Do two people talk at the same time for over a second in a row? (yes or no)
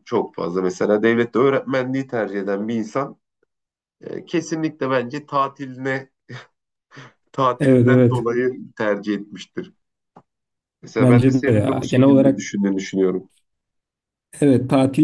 yes